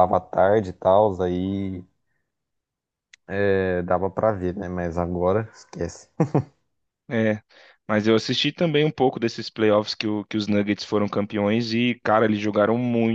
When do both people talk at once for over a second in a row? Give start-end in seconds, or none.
none